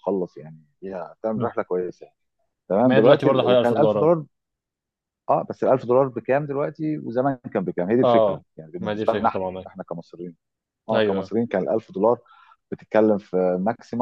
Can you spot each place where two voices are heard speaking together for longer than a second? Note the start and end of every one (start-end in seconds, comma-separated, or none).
2.9-4.1, 8.0-9.7